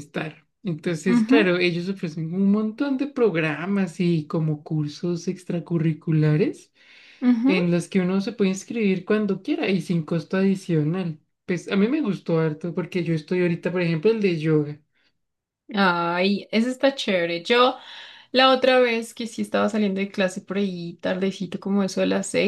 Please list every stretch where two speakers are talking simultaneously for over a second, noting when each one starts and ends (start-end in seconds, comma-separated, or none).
none